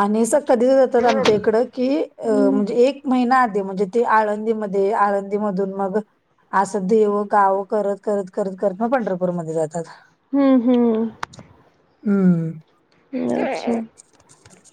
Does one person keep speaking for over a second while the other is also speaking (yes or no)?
no